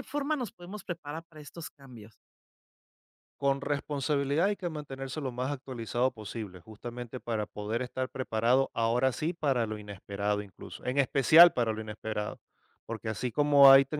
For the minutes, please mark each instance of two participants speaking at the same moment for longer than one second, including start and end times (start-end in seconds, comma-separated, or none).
none